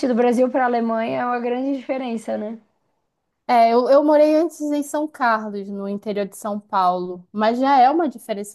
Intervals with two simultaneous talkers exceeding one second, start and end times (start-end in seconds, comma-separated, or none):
none